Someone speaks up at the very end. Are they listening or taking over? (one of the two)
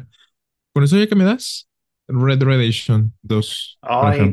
taking over